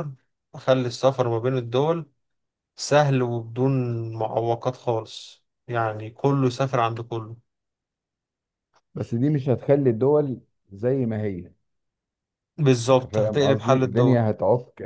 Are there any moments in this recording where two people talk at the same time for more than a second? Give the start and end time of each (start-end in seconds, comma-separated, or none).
12.9-14.2